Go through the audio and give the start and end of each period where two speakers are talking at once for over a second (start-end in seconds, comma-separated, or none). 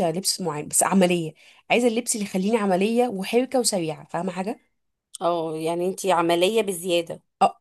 none